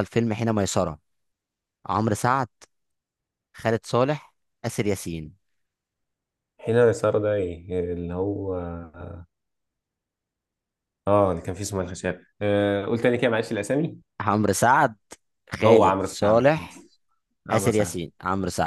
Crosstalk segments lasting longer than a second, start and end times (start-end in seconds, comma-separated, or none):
15.6-16.8